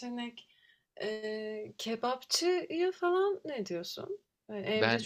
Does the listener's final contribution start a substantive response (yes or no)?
no